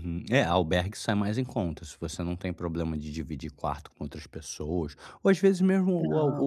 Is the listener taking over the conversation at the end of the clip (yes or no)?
no